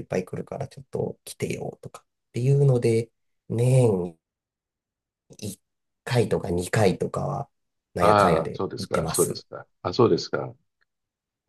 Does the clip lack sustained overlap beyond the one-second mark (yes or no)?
no